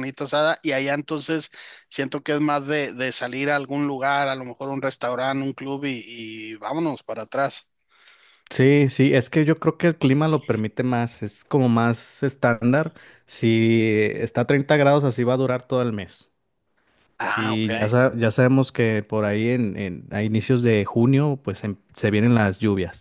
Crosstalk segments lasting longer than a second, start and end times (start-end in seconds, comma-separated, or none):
none